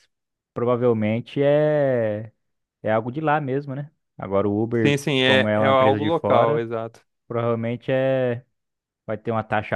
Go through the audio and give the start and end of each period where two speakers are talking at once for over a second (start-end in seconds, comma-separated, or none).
4.8-6.6